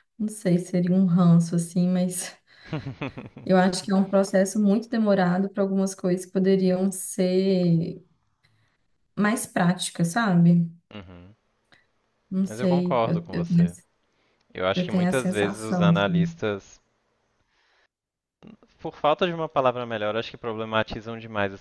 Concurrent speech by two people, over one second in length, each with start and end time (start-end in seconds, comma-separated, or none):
12.5-13.8, 14.7-16.4